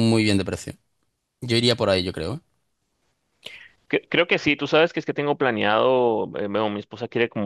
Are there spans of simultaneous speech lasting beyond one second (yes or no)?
no